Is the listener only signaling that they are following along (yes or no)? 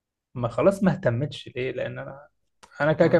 yes